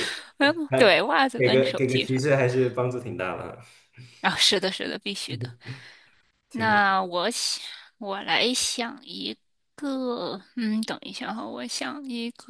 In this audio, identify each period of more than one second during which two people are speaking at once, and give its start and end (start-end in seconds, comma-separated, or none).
0.7-2.2